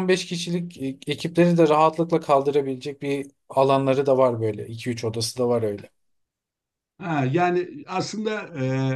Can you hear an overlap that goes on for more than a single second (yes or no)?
no